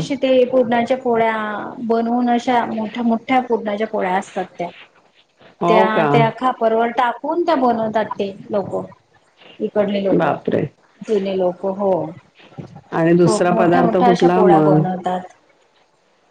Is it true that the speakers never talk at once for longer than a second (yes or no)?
no